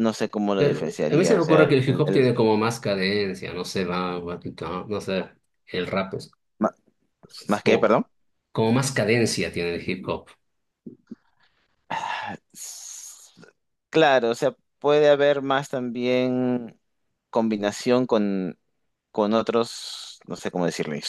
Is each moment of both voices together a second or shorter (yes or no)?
no